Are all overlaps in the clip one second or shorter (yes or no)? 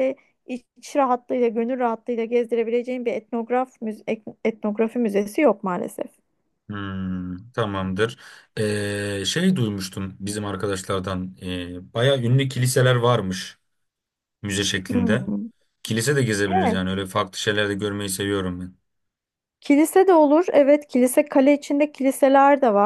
yes